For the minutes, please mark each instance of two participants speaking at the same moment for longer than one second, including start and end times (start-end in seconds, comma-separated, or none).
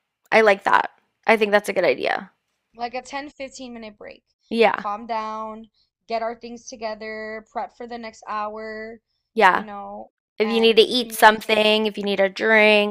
10.4-11.7